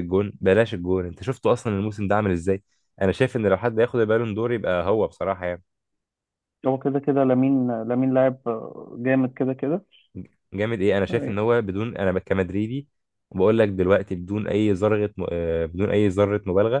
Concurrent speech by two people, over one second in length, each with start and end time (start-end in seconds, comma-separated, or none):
none